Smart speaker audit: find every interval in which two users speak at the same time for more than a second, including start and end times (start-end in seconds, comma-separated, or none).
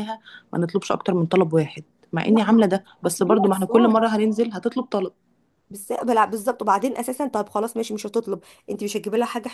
2.2-4.0